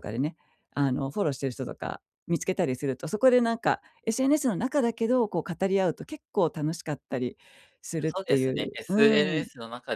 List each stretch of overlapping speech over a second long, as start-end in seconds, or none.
8.0-9.5